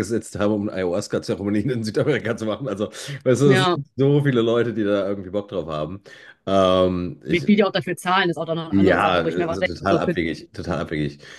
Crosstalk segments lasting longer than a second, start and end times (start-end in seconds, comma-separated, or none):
8.7-10.2